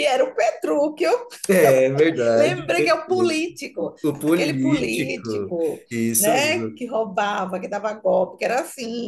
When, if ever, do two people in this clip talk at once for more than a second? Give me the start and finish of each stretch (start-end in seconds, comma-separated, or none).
4.0-6.8